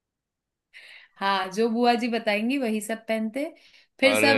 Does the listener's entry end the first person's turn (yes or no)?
no